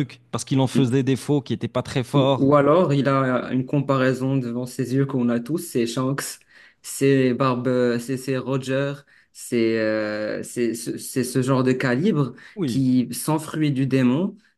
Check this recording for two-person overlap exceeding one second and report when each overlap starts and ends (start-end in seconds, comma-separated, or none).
none